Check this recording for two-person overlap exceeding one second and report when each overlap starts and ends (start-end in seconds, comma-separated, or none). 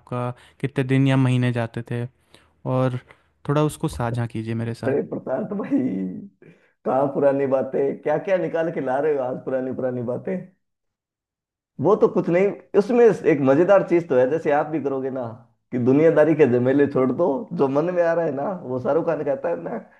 none